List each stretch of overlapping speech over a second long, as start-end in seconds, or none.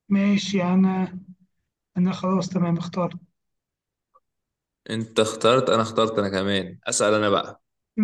none